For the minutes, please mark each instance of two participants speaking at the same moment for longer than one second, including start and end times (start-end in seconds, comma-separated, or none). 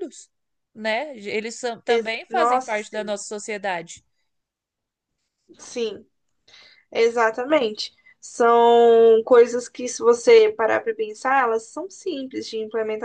1.9-3.2